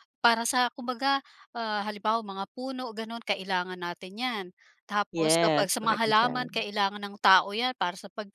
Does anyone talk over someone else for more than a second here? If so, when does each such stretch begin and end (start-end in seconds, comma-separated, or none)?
5.1-6.7